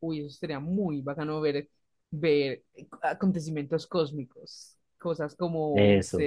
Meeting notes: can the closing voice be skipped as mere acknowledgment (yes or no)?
yes